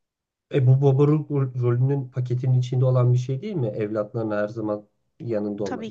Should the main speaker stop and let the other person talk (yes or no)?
no